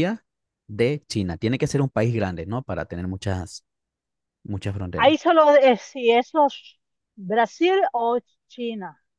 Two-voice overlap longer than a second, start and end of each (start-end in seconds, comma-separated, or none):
none